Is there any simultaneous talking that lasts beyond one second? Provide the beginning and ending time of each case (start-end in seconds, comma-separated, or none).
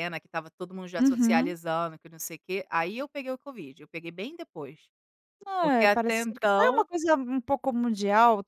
5.6-6.9